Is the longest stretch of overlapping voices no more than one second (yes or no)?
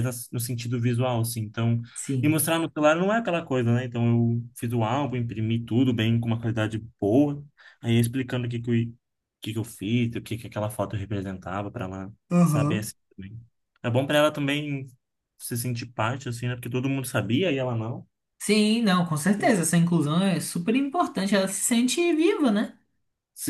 yes